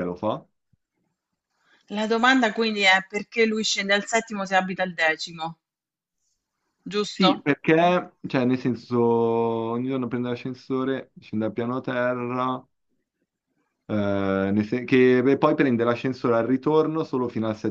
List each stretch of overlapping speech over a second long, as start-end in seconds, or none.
none